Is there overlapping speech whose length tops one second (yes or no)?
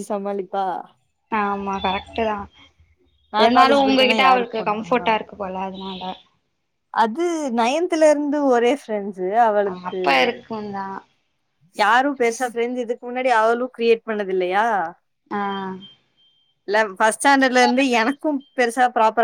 yes